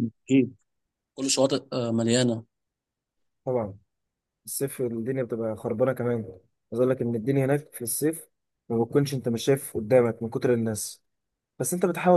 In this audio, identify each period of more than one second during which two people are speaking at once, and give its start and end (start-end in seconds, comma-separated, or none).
none